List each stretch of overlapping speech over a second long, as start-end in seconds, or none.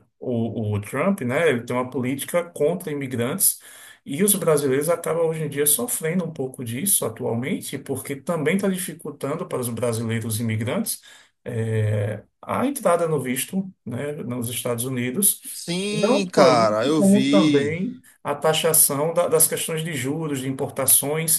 15.5-17.8